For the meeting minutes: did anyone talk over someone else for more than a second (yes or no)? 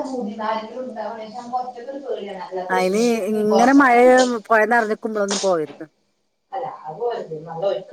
no